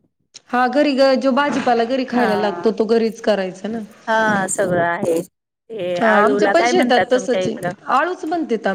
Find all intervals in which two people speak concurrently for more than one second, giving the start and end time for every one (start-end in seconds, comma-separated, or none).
6.0-7.6